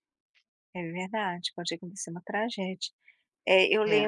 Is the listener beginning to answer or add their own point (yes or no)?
no